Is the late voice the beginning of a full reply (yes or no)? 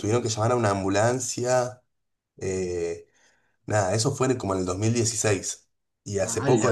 no